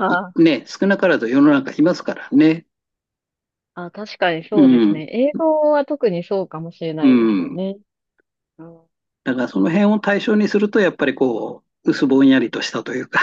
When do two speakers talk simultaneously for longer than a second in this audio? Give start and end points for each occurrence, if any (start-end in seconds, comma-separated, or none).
none